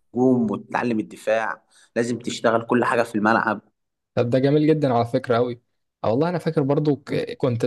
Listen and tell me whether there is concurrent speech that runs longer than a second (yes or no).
no